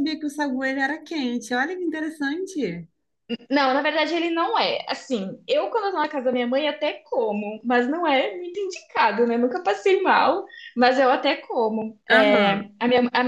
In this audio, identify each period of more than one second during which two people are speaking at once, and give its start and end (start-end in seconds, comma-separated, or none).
none